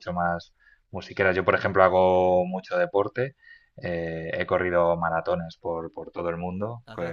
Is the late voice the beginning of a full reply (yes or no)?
no